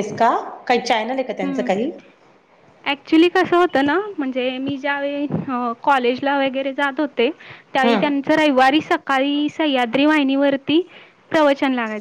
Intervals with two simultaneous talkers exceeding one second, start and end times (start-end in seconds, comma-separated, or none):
none